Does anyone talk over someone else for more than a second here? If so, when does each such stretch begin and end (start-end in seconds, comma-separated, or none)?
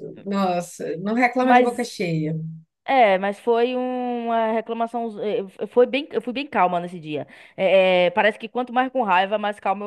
none